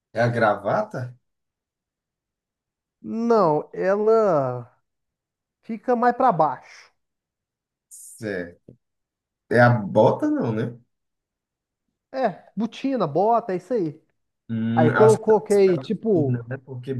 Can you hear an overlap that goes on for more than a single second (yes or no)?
yes